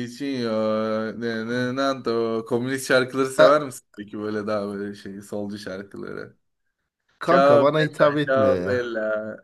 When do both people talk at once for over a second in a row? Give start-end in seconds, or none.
7.2-8.8